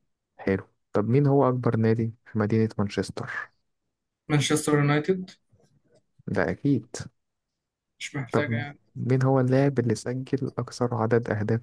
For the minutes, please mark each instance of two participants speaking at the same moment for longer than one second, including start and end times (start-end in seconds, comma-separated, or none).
none